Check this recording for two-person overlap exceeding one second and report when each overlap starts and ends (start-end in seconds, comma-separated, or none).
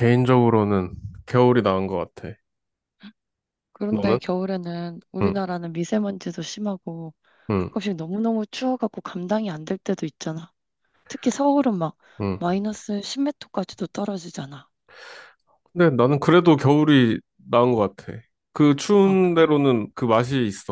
none